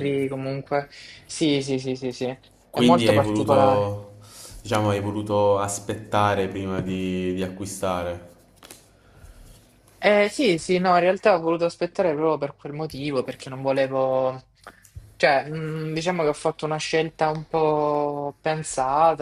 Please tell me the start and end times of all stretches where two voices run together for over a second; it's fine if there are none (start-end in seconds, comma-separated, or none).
2.7-3.9